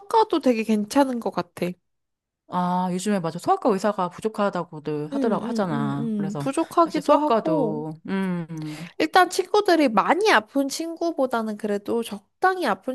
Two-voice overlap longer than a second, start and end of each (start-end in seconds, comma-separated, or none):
5.1-7.8